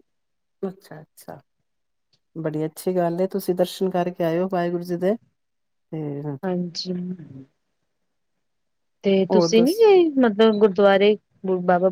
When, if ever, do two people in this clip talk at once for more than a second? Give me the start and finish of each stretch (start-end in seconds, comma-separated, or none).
none